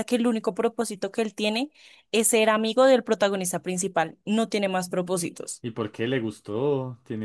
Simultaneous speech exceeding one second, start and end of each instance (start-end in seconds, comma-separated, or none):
none